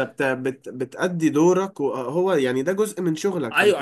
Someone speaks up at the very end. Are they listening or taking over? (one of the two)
taking over